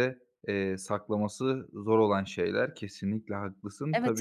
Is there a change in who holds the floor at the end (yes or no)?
yes